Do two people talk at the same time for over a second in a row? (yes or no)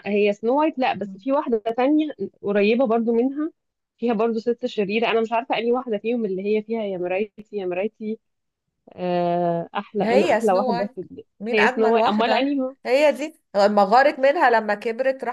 yes